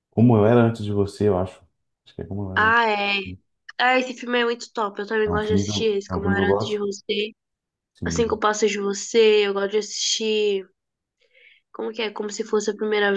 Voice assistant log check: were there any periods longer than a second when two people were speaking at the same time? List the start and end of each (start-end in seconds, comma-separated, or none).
5.2-6.9